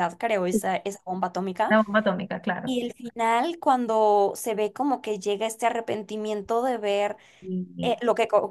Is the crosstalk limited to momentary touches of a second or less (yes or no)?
yes